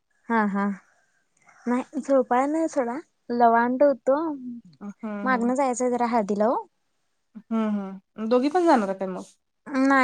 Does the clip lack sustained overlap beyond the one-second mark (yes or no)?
yes